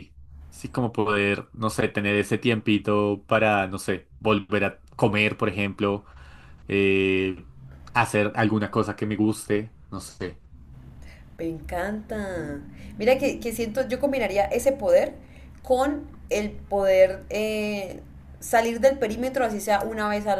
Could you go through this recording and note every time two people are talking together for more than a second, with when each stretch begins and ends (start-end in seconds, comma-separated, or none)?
none